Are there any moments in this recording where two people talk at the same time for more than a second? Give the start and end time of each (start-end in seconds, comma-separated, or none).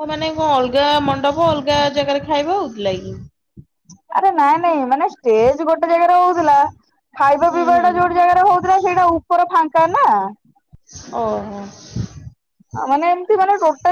none